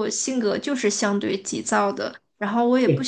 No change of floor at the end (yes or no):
yes